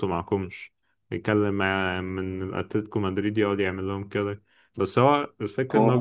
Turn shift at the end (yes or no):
no